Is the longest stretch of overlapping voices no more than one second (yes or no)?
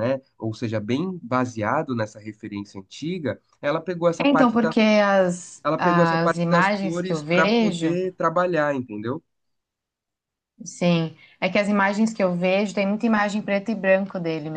no